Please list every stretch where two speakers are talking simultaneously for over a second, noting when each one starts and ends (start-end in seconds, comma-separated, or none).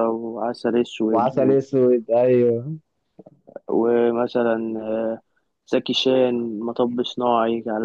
none